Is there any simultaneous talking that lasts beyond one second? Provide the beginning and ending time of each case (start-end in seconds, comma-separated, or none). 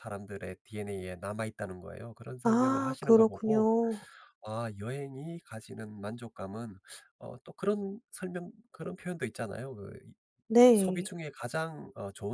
2.4-3.7